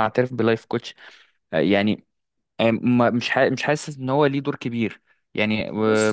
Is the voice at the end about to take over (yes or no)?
yes